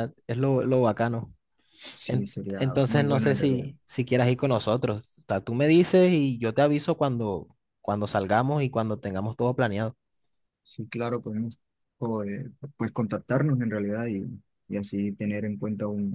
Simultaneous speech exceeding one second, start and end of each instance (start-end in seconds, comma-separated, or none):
2.1-3.7